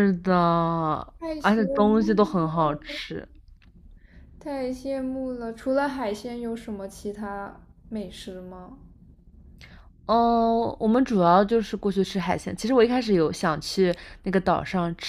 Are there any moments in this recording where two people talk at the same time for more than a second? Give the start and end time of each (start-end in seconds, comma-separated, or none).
1.4-3.0